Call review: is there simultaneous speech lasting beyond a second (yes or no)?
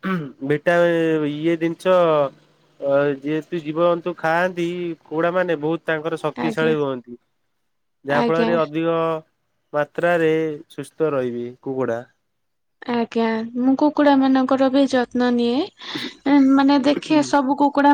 no